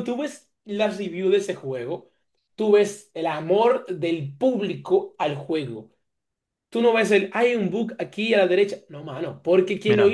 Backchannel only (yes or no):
yes